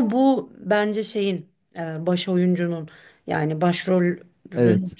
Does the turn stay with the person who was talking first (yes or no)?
yes